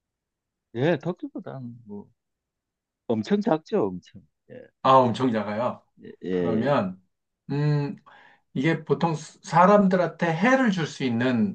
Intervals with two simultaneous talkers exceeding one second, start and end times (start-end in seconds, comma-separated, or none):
none